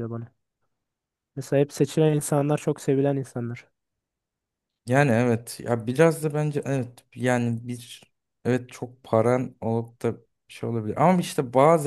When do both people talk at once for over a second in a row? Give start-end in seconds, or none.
none